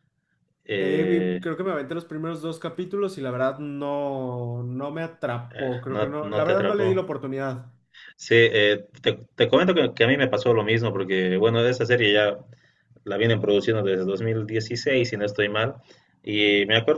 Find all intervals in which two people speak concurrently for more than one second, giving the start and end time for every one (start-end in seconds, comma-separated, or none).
5.5-7.0